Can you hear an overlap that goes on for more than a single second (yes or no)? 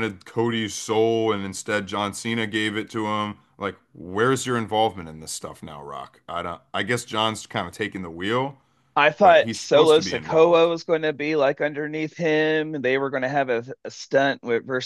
yes